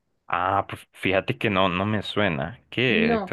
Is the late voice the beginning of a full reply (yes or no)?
yes